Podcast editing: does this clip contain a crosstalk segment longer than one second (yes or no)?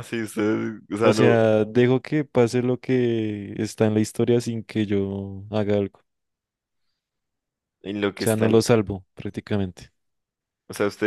no